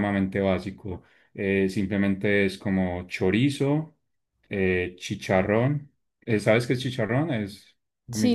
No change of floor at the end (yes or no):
no